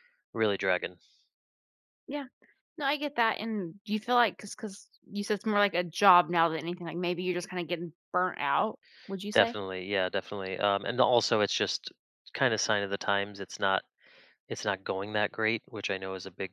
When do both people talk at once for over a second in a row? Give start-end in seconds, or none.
none